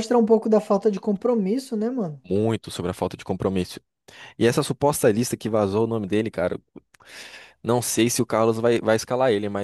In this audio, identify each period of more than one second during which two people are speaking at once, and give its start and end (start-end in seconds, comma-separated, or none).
none